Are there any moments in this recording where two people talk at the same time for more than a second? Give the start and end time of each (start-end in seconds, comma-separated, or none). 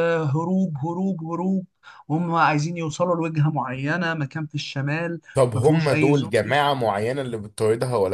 5.3-6.6